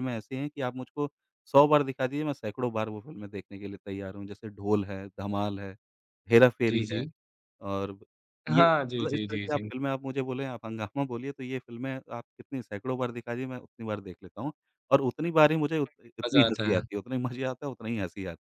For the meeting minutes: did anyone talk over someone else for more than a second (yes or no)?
yes